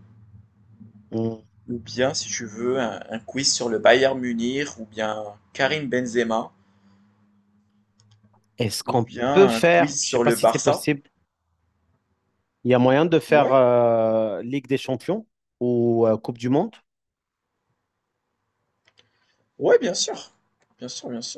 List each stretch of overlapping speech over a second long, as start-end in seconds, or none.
8.8-10.8